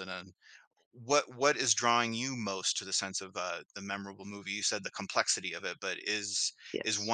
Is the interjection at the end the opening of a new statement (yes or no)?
no